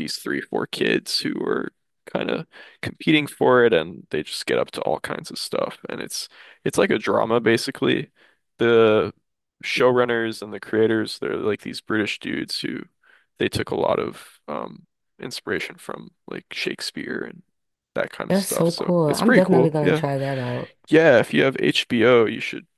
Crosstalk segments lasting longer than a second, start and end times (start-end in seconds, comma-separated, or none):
18.3-20.0